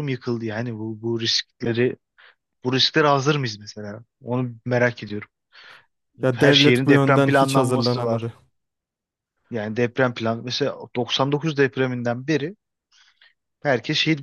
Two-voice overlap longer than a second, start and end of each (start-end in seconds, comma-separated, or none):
6.3-8.3